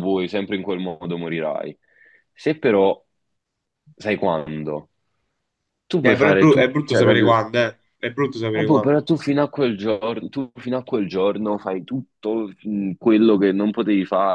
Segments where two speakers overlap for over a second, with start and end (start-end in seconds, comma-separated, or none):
6.0-7.3